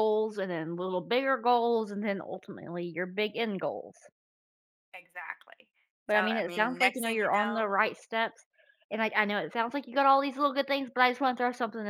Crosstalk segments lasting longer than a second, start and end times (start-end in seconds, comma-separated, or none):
6.1-7.7